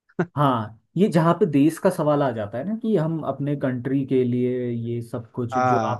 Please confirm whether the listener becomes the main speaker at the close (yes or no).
no